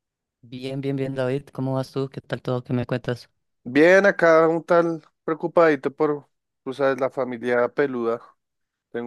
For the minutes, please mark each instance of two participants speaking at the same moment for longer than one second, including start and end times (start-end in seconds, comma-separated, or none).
none